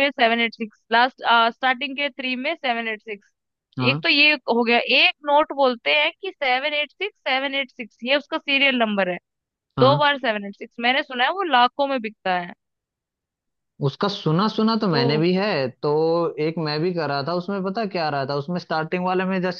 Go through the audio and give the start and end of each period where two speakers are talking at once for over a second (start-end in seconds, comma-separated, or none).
none